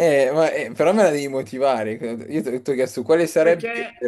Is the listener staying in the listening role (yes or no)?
no